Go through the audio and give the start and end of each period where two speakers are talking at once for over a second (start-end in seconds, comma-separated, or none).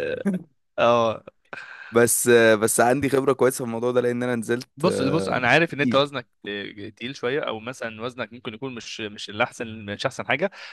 4.8-6.1